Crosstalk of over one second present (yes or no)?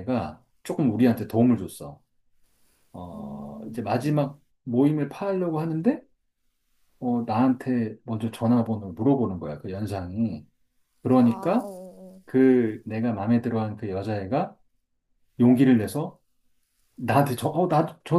yes